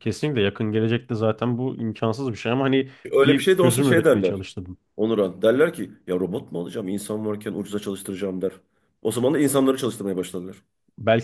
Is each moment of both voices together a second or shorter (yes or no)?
no